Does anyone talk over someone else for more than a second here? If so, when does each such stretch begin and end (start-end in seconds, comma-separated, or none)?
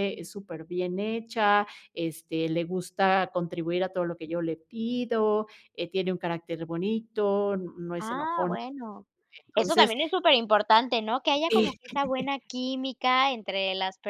none